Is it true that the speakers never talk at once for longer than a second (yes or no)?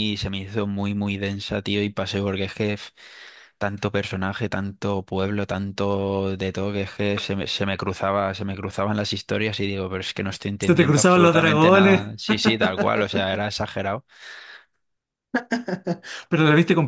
no